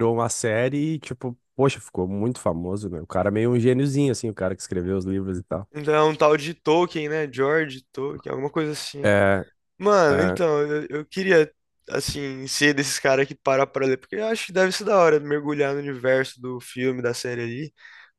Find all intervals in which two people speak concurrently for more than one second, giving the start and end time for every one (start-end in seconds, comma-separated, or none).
none